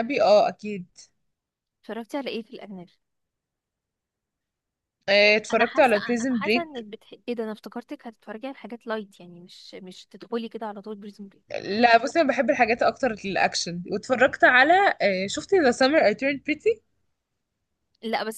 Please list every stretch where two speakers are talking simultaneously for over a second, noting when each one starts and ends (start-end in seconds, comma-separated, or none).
5.5-6.8